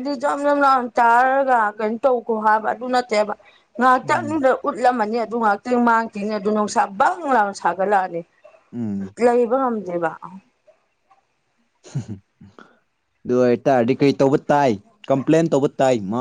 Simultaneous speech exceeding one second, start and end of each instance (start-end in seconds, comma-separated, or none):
none